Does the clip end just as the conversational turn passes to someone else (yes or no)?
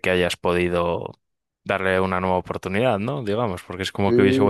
yes